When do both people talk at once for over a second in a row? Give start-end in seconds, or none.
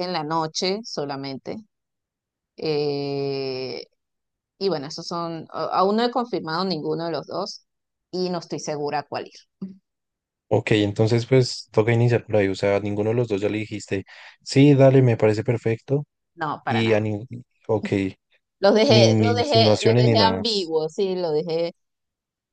18.9-20.4